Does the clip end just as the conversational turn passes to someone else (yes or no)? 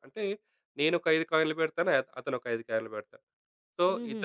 no